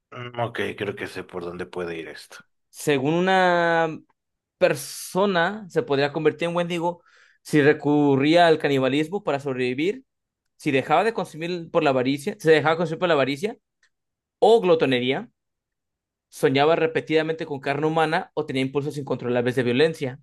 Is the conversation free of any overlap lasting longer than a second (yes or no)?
yes